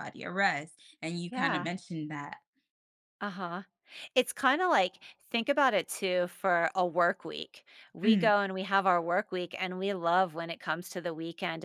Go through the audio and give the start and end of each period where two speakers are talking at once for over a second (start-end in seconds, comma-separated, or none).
none